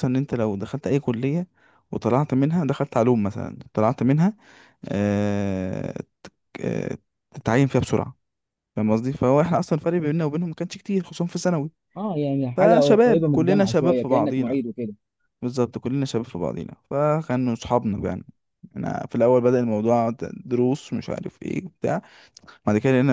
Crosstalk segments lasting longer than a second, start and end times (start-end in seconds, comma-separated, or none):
12.6-14.6